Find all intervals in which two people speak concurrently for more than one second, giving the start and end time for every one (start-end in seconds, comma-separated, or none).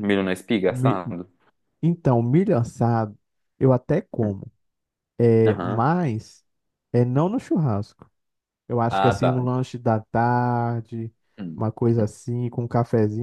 none